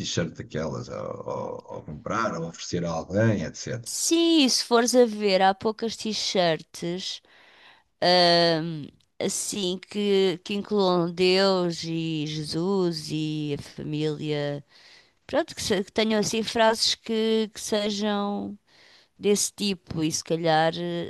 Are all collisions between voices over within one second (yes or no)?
yes